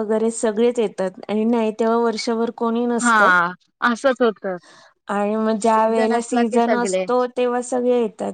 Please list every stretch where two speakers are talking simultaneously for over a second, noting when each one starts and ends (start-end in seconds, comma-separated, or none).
5.6-7.0